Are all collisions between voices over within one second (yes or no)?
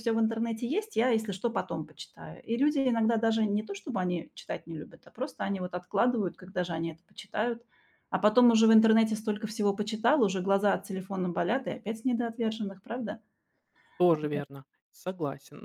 yes